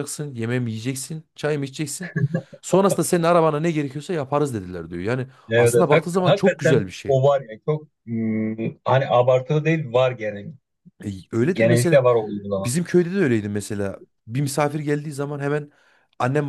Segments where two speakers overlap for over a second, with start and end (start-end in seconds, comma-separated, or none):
5.5-7.2